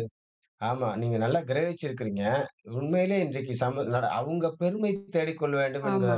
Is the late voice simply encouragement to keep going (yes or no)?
yes